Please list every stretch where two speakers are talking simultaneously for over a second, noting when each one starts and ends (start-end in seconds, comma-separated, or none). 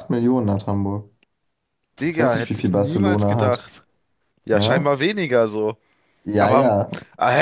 2.1-3.7